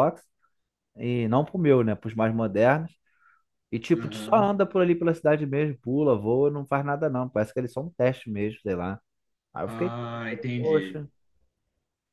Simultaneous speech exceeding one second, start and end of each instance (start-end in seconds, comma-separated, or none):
9.6-11.1